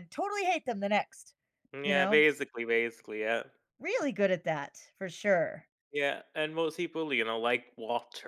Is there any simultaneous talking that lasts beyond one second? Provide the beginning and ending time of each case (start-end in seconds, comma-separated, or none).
none